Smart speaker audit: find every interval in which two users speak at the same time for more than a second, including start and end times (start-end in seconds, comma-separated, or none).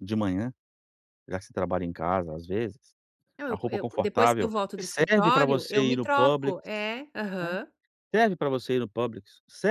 3.5-6.6